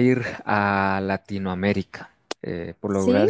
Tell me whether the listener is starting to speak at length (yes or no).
no